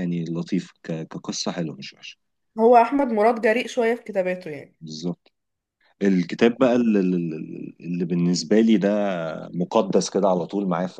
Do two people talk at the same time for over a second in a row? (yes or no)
no